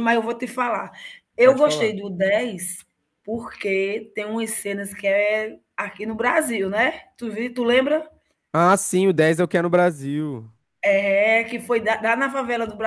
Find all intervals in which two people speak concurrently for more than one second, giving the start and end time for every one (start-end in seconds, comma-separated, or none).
none